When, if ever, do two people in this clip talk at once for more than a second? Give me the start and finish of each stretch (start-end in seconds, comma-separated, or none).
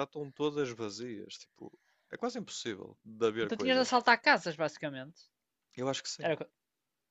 none